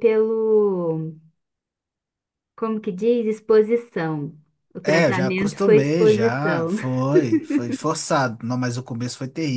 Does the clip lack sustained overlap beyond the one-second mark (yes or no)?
no